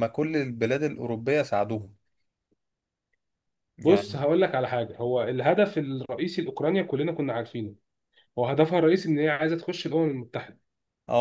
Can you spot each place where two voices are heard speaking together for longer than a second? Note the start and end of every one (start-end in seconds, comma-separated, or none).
none